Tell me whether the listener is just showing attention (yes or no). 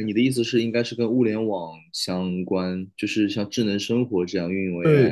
no